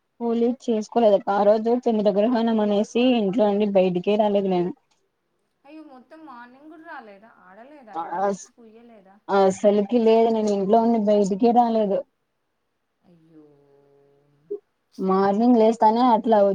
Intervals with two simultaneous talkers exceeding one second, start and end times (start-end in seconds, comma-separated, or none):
none